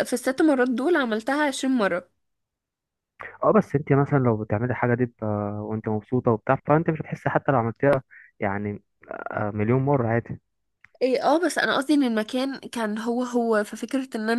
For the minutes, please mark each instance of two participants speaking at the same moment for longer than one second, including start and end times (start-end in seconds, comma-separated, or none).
none